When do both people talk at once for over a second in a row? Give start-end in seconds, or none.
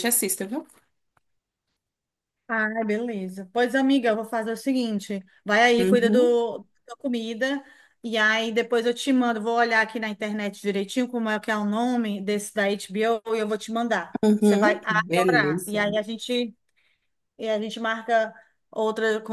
14.2-15.8